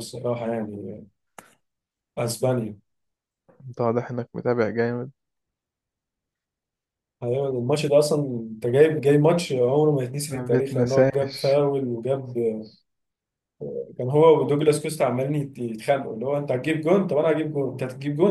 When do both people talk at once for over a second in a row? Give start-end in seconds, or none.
10.3-11.6